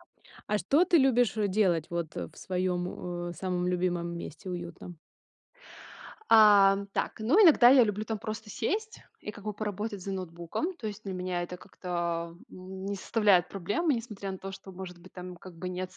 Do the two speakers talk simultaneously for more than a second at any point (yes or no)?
no